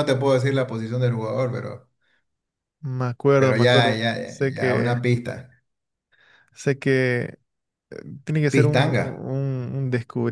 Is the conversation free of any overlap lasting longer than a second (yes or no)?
no